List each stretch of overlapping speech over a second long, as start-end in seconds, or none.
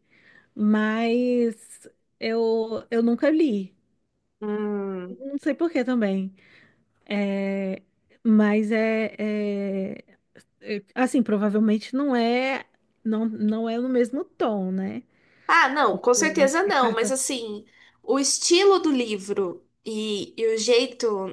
15.8-17.1